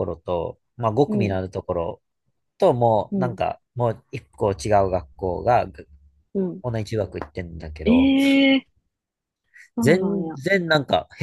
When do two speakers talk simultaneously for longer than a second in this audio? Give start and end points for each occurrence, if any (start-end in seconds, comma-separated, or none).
none